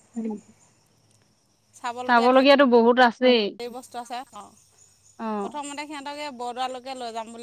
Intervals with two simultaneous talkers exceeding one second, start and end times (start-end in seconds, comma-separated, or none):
2.1-3.4